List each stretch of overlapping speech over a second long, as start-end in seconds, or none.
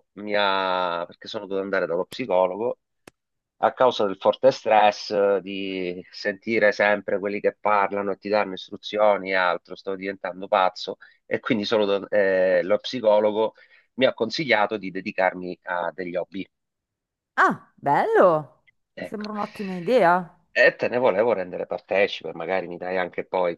none